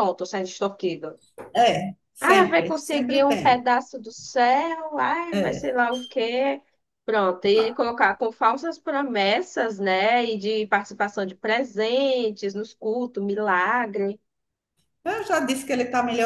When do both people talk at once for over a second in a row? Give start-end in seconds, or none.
2.2-3.6